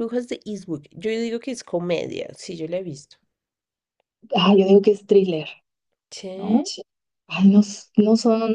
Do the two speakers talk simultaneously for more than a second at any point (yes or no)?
no